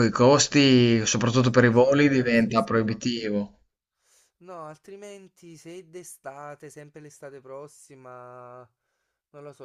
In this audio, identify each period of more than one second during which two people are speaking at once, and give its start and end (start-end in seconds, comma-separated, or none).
1.4-3.0